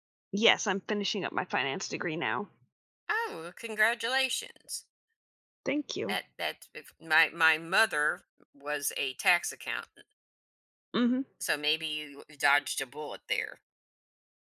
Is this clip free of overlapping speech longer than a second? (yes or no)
yes